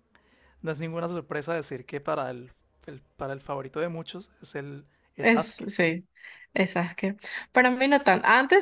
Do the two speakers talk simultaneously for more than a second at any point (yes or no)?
no